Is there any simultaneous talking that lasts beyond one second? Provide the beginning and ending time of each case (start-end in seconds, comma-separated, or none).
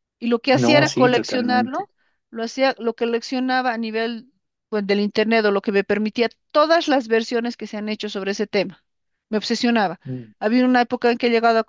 0.5-1.9